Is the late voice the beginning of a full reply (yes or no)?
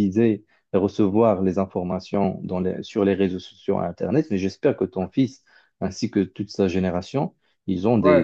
no